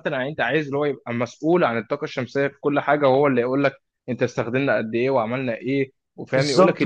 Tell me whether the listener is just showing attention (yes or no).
no